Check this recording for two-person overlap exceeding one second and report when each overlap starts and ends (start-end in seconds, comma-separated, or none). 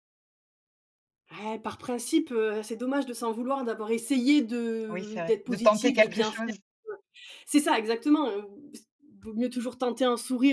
4.9-6.5